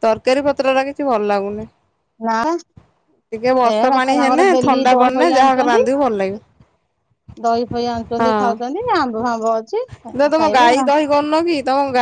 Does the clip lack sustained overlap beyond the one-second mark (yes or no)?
no